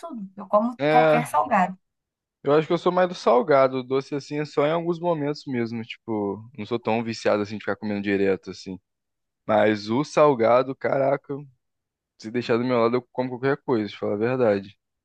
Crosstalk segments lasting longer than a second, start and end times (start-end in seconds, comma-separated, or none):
none